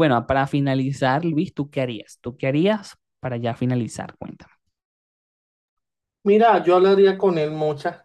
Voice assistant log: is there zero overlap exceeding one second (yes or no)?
yes